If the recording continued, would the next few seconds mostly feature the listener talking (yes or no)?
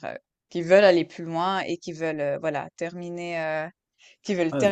no